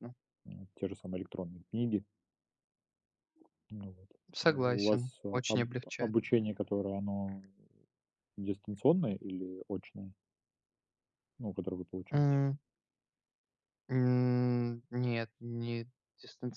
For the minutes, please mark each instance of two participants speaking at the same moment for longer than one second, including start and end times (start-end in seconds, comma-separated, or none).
4.3-6.2